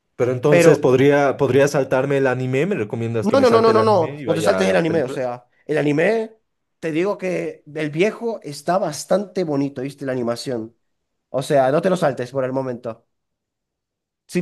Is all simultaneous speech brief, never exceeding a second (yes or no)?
no